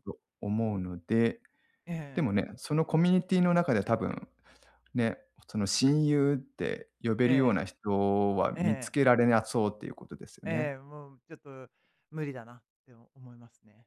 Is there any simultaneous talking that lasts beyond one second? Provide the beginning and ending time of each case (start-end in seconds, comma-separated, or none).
none